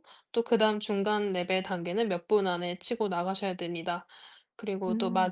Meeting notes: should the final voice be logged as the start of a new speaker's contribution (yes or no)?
no